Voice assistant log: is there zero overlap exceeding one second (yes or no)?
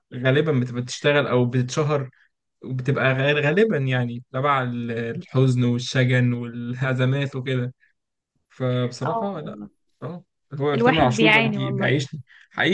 no